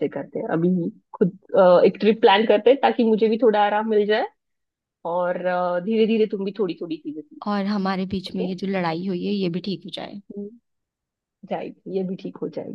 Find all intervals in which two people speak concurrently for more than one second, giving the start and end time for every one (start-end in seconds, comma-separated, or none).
none